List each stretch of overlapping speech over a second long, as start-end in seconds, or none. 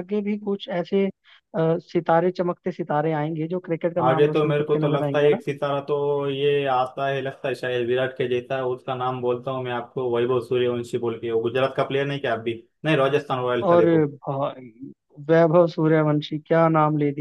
4.0-5.4